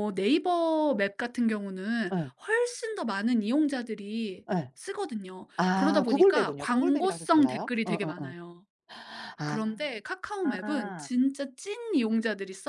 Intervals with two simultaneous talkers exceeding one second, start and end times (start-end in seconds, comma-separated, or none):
5.6-8.3